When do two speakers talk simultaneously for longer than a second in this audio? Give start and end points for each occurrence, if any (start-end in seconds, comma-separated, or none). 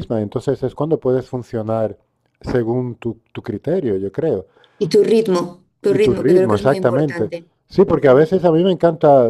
5.9-7.3